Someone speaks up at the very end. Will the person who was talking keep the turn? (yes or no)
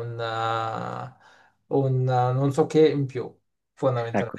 no